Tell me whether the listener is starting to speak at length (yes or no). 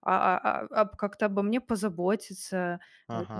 no